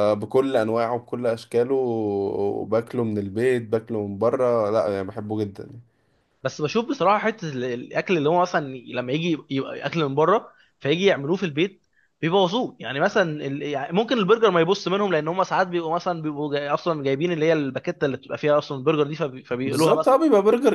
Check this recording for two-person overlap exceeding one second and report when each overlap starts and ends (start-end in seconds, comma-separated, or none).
none